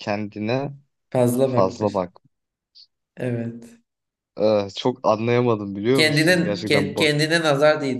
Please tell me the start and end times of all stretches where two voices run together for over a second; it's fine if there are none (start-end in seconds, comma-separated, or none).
5.9-7.1